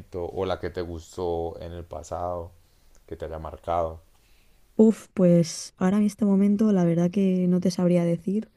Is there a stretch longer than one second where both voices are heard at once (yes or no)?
no